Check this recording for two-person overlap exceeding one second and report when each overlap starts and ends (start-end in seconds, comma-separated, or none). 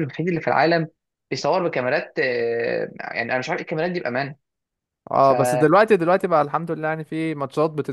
none